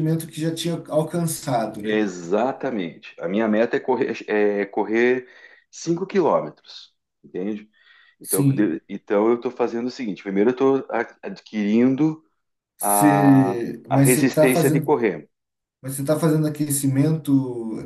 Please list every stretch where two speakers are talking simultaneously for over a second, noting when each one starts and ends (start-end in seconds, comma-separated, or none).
12.8-15.0